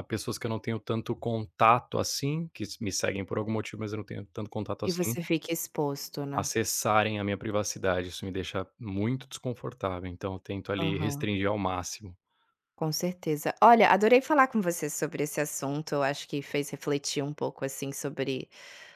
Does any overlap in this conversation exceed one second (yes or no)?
no